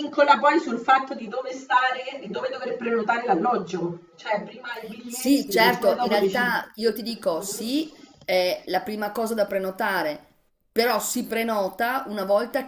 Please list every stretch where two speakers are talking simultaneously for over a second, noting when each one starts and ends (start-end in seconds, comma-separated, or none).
5.0-6.6